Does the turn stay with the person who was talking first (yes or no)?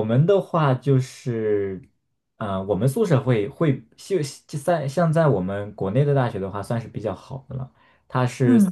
yes